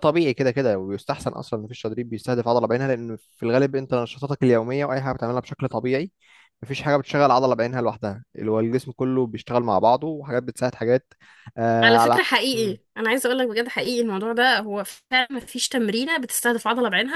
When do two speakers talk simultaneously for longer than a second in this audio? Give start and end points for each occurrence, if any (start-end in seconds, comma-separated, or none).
none